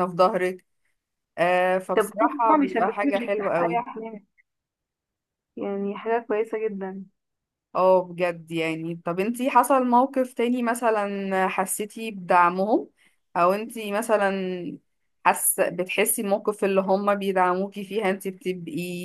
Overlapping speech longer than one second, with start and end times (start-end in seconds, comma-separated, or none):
1.9-3.8